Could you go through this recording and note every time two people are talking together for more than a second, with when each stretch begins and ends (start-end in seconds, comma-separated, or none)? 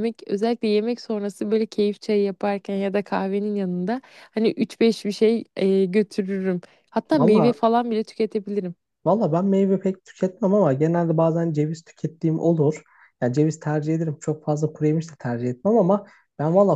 none